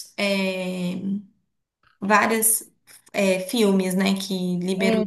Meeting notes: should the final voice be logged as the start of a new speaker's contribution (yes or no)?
no